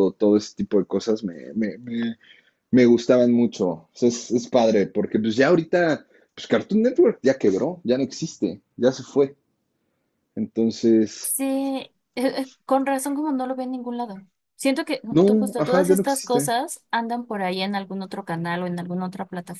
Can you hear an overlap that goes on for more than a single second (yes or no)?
yes